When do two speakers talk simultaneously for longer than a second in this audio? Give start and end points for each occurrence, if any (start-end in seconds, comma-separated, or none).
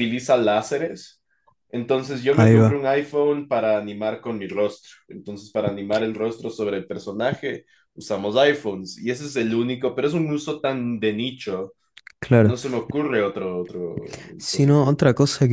none